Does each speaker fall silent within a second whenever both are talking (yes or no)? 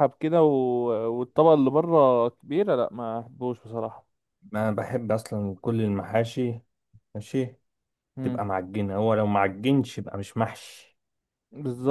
yes